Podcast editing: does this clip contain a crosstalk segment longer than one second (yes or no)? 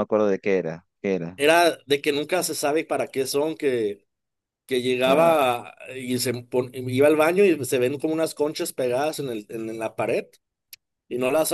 no